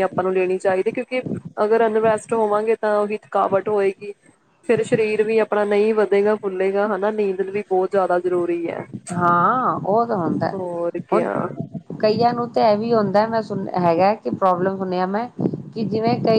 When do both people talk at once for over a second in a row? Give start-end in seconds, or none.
none